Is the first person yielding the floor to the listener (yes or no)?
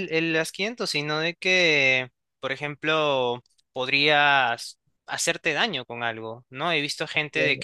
no